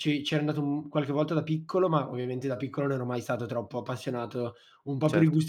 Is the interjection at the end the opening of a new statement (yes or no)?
no